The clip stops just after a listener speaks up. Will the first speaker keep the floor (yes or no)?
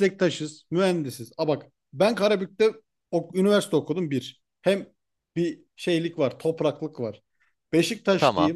yes